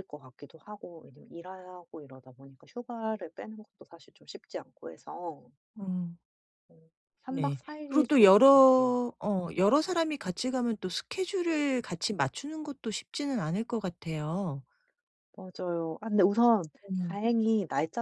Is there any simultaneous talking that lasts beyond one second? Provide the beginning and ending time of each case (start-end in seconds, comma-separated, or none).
7.3-8.9